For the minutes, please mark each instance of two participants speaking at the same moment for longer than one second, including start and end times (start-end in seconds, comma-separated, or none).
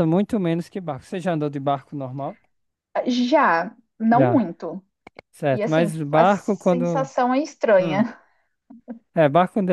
5.5-7.1